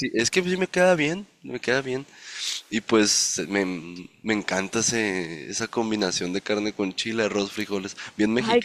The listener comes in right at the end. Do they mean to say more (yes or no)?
yes